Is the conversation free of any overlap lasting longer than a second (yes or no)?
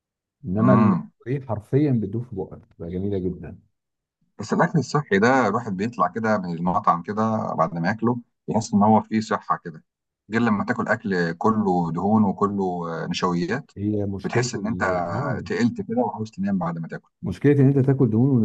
yes